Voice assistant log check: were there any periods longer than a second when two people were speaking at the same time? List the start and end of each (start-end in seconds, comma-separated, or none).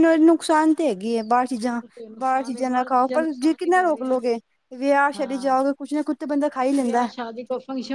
2.2-4.2